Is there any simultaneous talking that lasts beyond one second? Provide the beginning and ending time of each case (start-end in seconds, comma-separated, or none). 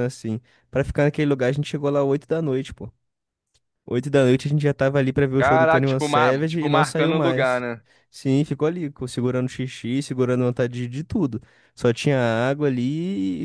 5.4-7.6